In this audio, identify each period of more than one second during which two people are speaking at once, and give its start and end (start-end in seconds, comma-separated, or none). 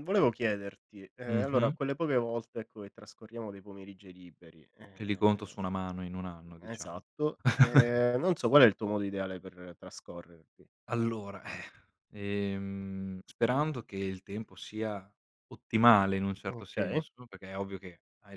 none